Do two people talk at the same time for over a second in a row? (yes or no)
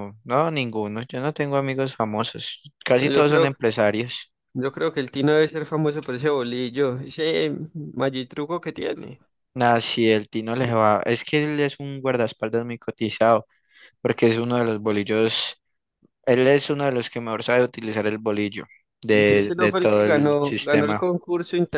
yes